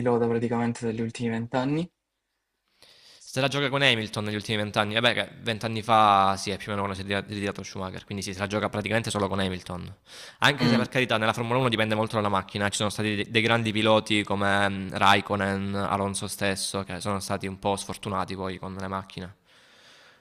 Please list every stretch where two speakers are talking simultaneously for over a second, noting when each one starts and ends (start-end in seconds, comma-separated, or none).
none